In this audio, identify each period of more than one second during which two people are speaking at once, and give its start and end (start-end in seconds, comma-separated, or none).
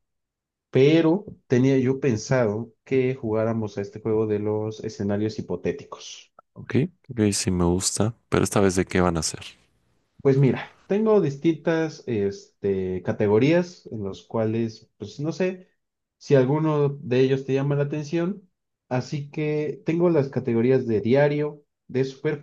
none